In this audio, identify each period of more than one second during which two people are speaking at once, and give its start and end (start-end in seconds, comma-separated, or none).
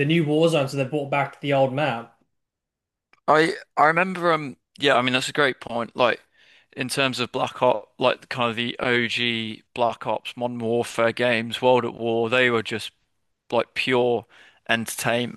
none